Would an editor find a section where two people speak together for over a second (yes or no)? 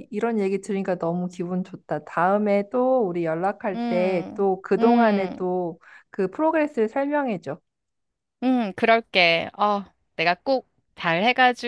yes